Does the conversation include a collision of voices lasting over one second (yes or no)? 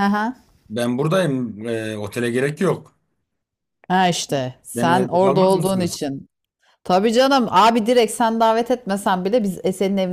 yes